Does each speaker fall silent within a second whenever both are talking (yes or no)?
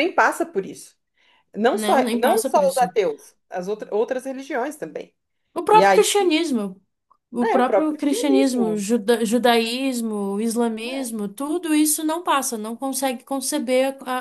no